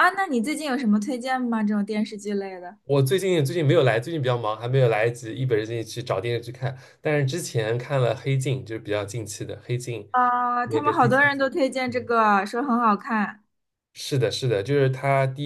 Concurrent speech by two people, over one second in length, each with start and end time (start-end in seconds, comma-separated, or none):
10.6-12.1